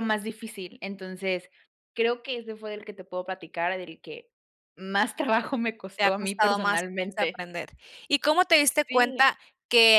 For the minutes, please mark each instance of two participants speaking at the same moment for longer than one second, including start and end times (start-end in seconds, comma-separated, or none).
6.0-7.5